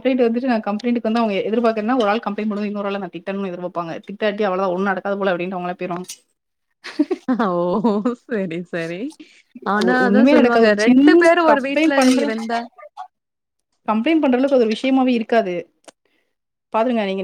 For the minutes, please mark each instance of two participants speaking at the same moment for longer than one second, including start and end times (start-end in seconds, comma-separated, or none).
10.1-12.2